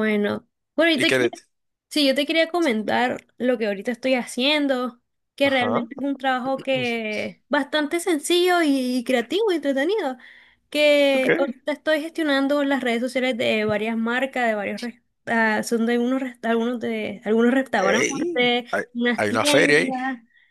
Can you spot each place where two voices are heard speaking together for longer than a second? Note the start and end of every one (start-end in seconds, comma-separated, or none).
17.8-20.0